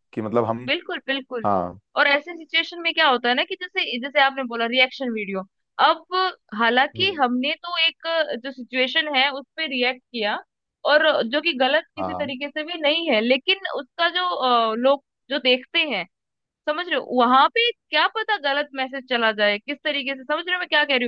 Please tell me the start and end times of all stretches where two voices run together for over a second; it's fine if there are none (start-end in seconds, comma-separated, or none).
none